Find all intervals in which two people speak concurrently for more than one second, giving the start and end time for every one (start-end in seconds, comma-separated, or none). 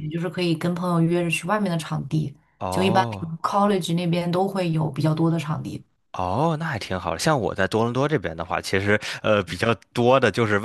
none